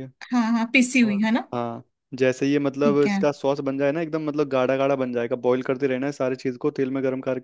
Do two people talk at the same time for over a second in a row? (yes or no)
no